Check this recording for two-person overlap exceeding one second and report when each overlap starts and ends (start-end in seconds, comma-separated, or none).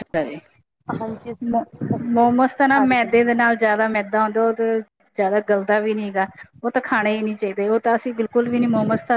2.1-3.6